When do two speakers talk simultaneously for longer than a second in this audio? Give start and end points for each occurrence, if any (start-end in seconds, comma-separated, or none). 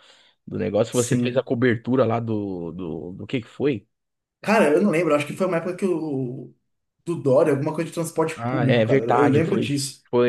8.4-9.7